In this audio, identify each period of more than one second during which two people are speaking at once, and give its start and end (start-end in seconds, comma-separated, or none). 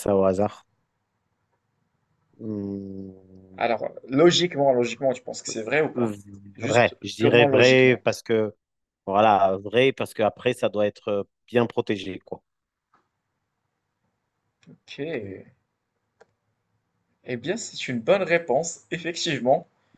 6.6-8.0